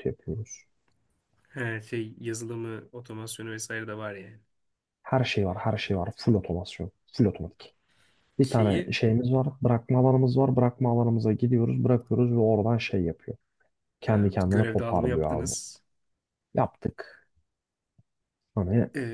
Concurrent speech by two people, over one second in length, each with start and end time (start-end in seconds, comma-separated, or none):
14.1-15.5